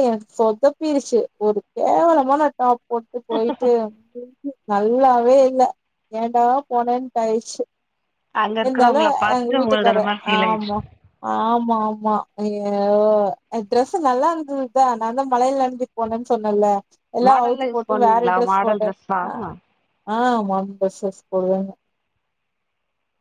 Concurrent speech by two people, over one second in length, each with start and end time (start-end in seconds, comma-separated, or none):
8.6-10.7, 17.3-19.2